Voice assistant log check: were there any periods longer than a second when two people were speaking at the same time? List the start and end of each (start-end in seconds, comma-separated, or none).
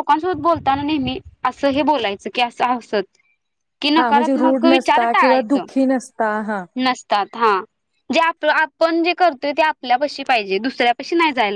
4.0-5.6